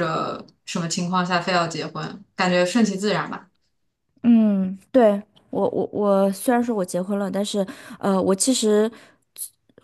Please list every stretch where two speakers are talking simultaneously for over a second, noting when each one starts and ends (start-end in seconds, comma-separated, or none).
none